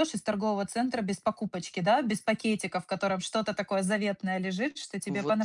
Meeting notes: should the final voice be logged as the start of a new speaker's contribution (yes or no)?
no